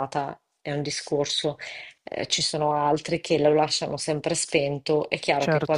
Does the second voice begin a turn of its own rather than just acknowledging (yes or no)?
no